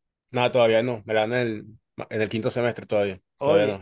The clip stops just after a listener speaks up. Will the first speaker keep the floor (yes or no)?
no